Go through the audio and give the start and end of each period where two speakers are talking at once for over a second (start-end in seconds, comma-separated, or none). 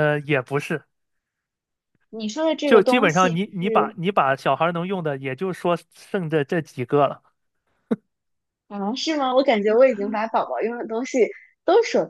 2.6-4.0